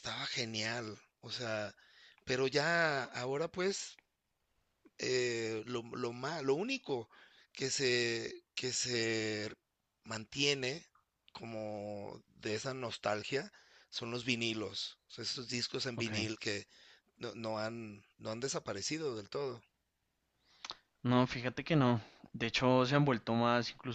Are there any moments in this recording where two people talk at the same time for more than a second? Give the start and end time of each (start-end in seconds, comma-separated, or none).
none